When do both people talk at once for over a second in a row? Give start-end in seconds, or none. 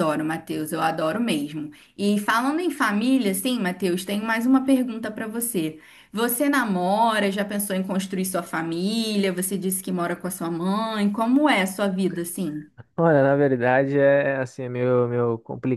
none